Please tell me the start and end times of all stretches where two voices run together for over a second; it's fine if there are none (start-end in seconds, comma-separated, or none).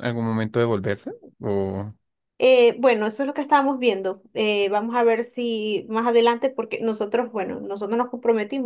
none